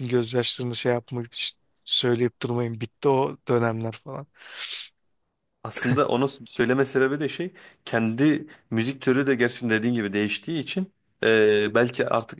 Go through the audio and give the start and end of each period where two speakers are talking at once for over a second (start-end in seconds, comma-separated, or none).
none